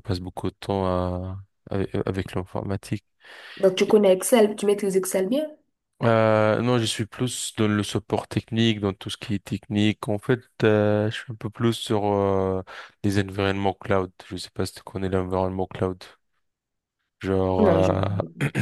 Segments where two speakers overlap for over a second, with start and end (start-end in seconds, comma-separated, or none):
none